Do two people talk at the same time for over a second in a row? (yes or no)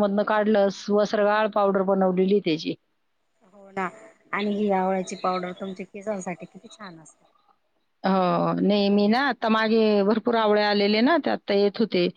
no